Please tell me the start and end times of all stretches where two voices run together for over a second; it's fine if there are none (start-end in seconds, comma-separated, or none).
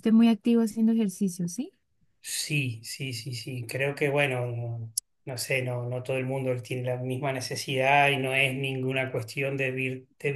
none